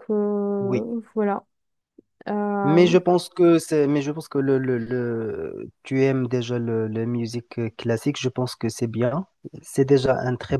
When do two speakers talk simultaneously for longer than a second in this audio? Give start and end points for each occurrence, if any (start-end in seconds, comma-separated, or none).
none